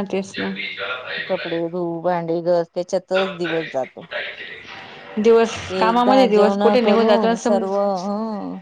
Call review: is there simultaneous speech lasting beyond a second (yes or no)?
yes